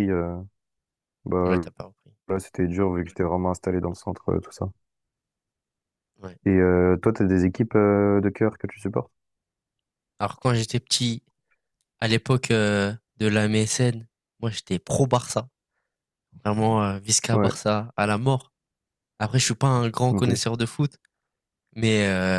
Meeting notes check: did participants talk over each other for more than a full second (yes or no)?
no